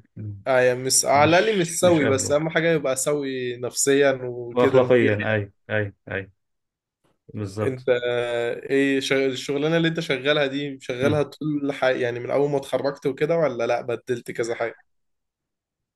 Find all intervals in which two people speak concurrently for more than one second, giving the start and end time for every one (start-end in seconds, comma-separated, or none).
1.1-2.4